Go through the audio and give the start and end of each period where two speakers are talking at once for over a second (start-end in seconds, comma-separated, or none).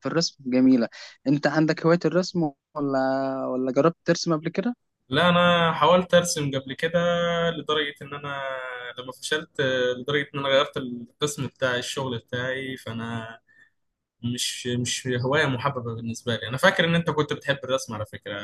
none